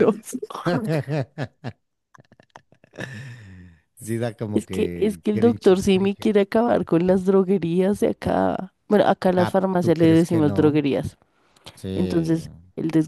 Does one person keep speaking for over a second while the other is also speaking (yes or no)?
yes